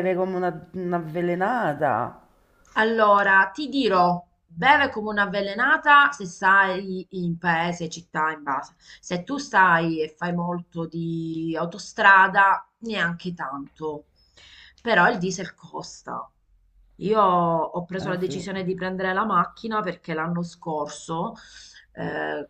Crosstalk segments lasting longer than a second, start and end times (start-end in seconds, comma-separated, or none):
none